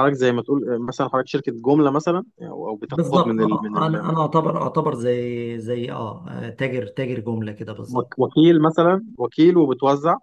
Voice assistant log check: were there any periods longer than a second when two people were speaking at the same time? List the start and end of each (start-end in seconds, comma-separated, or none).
2.9-4.1